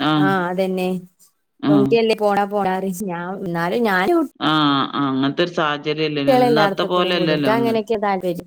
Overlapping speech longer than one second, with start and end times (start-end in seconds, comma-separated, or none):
6.1-7.8